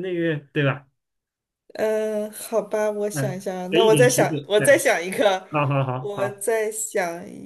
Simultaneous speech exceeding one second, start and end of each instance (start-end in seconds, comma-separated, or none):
3.1-4.8